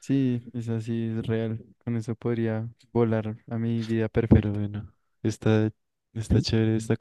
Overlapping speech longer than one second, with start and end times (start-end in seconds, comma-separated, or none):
none